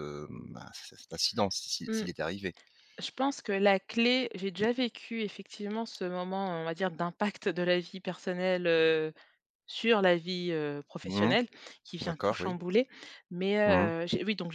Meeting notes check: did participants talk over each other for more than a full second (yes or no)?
no